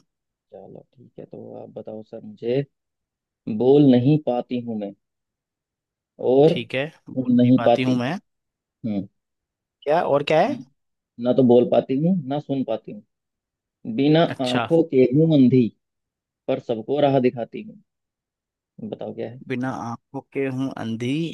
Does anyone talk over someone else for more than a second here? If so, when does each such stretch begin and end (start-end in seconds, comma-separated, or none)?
6.5-8.0